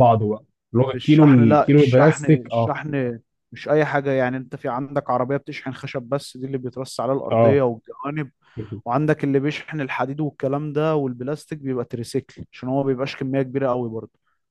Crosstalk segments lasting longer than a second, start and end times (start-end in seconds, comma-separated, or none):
0.9-2.7